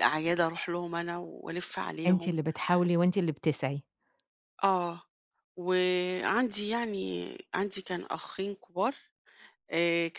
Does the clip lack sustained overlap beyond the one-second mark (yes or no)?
yes